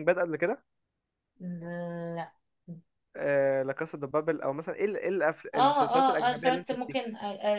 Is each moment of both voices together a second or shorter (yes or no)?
no